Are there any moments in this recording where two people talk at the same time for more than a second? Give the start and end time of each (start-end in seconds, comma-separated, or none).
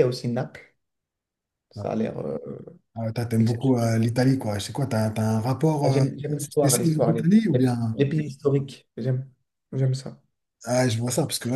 5.8-8.0